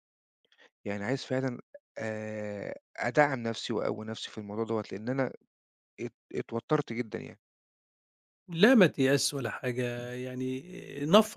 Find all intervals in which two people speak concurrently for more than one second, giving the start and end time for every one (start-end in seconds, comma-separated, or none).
none